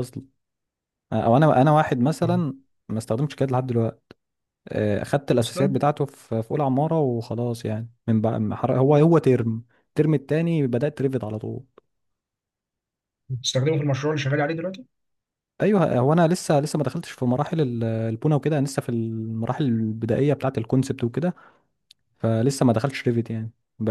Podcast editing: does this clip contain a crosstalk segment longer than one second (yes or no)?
no